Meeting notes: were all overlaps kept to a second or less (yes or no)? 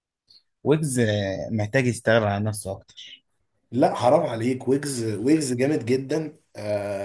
yes